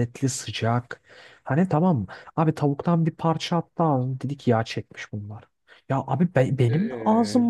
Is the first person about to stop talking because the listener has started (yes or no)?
no